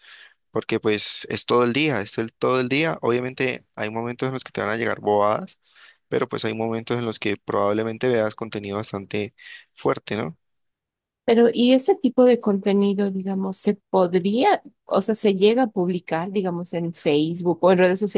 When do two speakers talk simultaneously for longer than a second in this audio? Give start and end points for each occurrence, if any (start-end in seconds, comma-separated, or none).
none